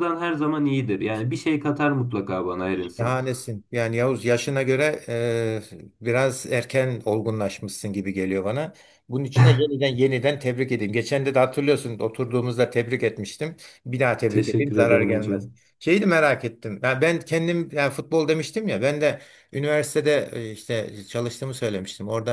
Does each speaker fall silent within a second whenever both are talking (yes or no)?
no